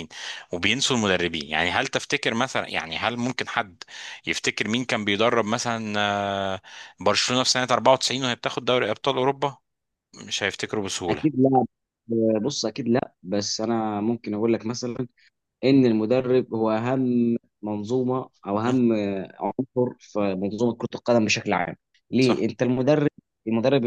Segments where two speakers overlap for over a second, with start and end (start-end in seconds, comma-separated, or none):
none